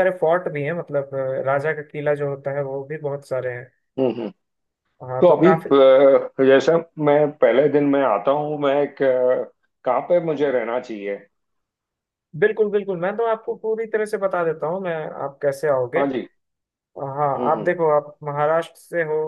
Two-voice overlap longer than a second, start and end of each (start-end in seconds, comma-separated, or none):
none